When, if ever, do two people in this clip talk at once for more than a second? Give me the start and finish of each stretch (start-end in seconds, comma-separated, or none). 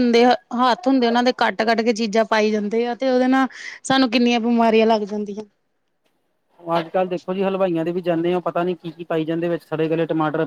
none